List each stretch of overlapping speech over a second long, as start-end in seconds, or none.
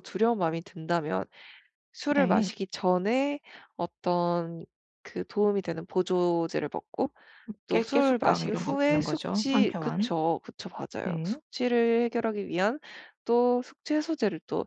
7.7-10.1